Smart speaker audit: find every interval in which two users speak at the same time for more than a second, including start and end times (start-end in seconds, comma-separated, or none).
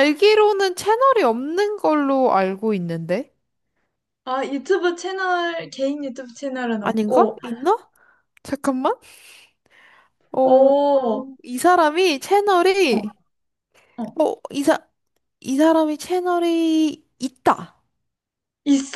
none